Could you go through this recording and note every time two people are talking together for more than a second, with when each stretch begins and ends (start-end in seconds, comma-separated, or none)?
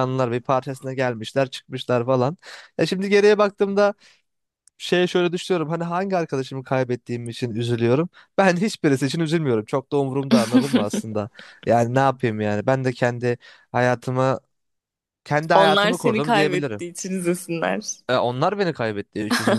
15.5-16.8